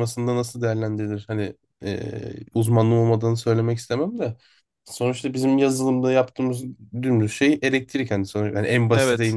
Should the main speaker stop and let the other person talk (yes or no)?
no